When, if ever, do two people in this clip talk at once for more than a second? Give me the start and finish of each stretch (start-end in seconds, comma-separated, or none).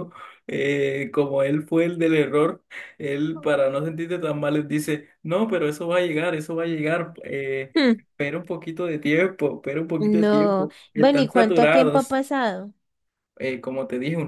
10.0-12.2